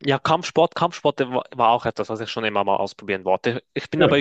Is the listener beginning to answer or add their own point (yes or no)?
no